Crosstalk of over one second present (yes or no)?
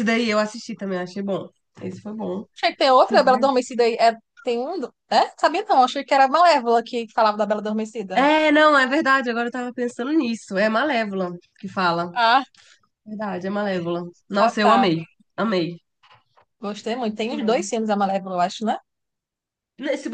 no